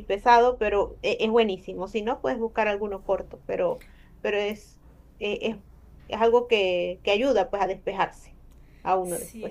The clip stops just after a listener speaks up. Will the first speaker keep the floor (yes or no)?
no